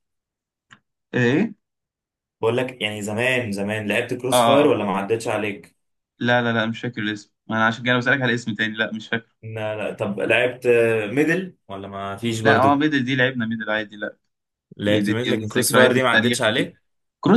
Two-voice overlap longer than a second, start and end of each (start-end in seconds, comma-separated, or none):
14.8-16.7